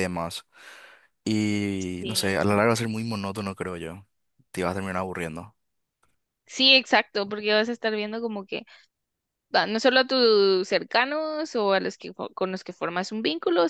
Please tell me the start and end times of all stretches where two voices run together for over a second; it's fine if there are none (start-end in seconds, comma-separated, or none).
none